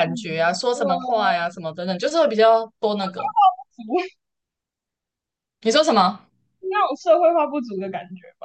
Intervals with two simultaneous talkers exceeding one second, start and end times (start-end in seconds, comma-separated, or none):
none